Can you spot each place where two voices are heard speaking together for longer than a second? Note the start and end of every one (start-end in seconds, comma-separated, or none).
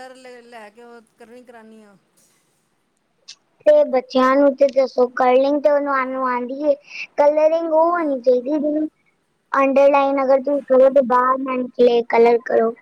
none